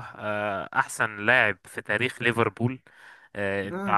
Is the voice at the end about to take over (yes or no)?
no